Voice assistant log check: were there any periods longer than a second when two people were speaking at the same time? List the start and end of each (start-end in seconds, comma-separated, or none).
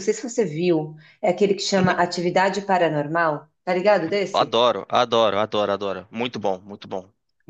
none